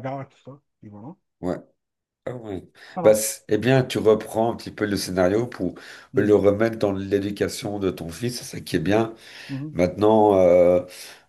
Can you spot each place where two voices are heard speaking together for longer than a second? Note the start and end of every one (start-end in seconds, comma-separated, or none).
none